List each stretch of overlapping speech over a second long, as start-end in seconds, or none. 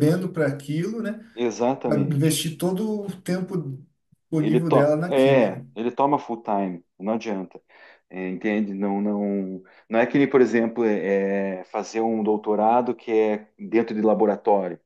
4.4-5.7